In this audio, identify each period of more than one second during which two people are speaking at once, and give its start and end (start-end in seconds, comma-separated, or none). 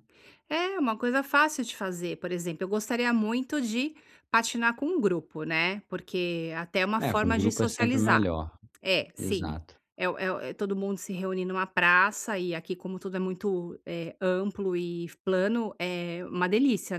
7.0-8.3